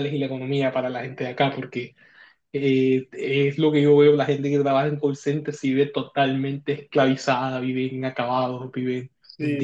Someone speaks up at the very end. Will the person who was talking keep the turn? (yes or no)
no